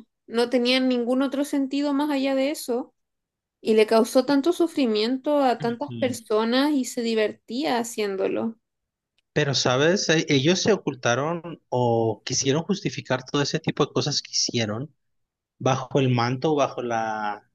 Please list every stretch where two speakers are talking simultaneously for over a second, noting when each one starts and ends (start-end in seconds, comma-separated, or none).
none